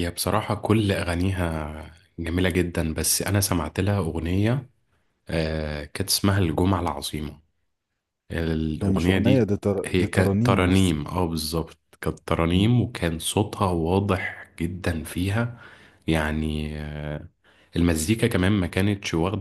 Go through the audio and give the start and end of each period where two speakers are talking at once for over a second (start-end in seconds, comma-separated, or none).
8.8-11.0